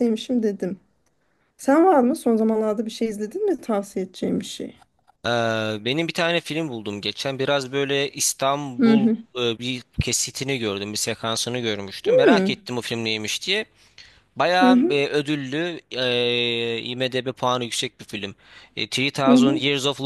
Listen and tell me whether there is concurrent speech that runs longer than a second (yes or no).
no